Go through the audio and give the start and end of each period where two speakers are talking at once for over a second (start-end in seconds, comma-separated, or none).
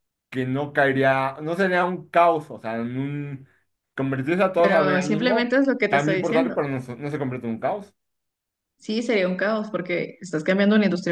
4.5-6.6